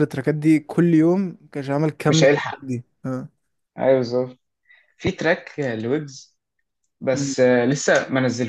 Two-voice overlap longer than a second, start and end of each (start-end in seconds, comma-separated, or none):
none